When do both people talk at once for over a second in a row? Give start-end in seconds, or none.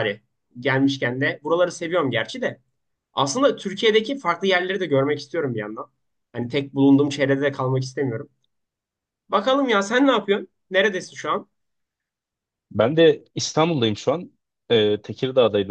none